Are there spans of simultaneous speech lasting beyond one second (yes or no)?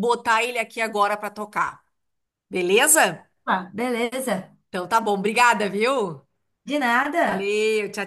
no